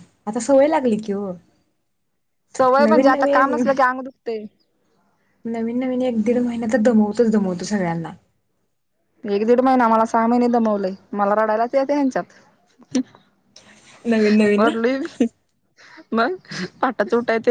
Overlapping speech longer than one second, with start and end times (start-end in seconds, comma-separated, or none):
none